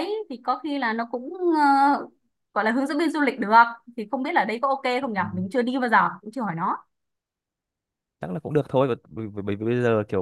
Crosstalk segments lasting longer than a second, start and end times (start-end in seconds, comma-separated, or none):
none